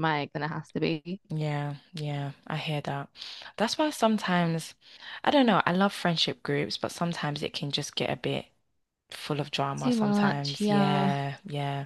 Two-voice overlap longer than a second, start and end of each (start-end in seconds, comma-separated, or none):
9.8-11.1